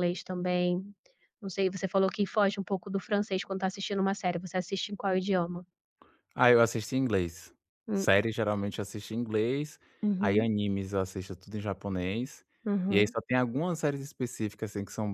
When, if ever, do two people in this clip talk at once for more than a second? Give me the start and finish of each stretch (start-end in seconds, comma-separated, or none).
none